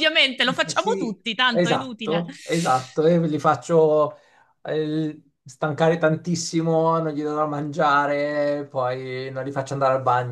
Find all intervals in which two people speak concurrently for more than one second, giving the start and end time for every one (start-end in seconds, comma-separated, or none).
0.7-2.2